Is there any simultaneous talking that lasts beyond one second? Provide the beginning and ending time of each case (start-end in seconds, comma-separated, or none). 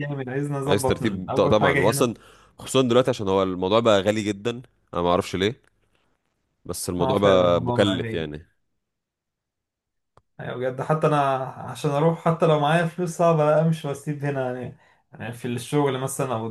0.7-2.1, 7.0-8.3